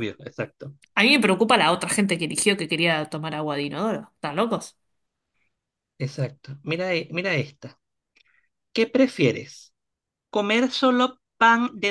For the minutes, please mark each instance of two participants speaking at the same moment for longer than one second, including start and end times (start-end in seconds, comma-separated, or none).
none